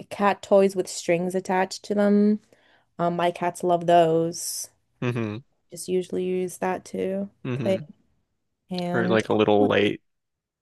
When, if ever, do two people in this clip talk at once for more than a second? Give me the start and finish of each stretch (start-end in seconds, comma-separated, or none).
none